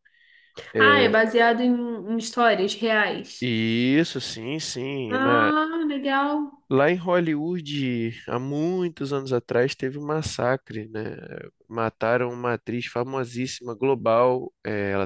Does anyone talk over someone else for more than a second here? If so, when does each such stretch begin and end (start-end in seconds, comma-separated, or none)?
none